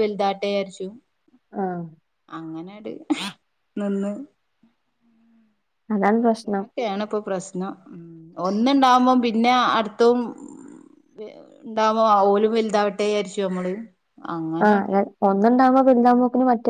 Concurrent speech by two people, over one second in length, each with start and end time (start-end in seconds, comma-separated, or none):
none